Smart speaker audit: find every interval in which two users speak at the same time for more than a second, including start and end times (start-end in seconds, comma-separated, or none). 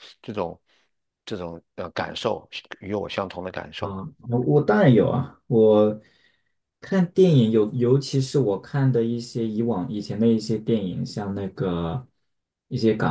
none